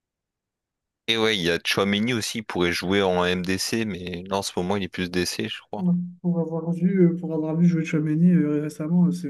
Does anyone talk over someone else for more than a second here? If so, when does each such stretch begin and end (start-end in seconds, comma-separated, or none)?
none